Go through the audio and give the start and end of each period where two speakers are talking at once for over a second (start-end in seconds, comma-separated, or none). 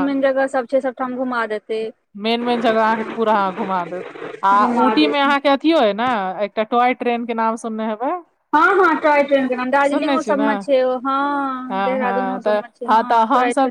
none